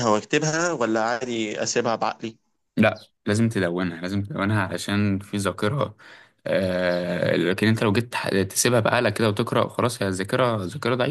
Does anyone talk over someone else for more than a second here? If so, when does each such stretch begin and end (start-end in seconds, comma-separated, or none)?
none